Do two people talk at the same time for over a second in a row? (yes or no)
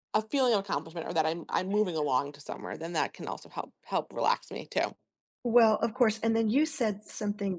no